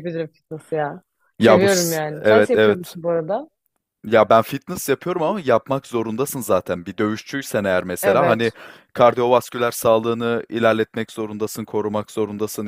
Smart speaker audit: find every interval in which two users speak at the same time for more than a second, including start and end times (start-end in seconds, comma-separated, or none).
1.4-3.0